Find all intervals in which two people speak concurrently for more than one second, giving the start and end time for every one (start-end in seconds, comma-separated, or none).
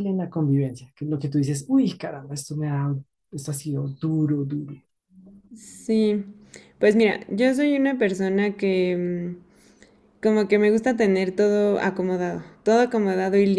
none